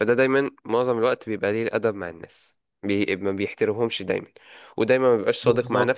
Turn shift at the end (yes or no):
no